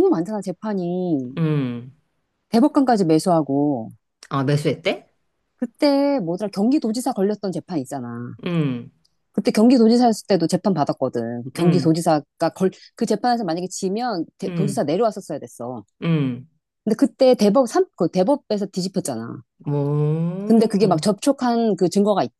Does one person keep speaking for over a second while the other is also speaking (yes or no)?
no